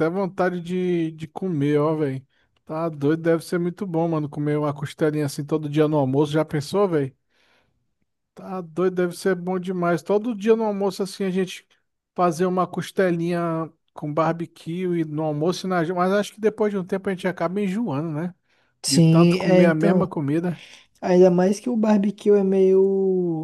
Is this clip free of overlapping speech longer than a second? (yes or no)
no